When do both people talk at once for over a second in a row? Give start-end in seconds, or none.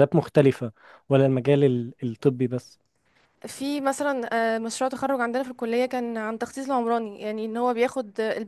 none